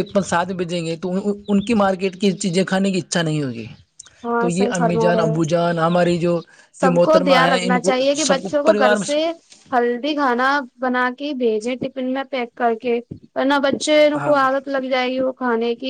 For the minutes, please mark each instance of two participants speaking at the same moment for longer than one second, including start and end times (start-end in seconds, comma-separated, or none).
6.8-9.2